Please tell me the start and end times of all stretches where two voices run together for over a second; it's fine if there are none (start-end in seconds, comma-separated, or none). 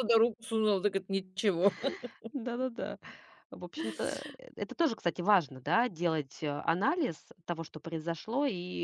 none